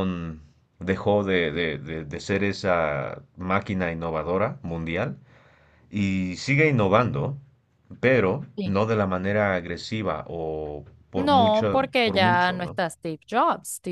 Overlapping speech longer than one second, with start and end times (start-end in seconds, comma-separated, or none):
11.2-12.8